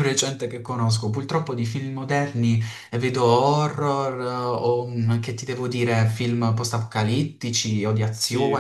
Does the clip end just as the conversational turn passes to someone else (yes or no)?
yes